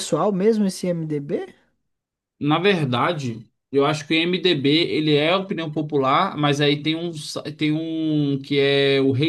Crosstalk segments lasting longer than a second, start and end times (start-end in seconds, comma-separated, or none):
none